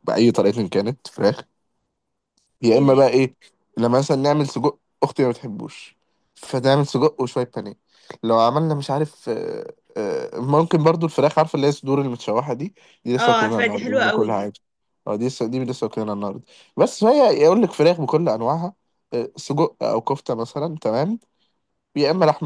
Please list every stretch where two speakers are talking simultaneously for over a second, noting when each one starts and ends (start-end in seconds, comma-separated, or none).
13.2-14.5